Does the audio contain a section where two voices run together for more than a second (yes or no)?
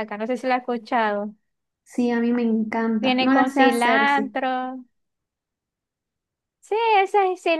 yes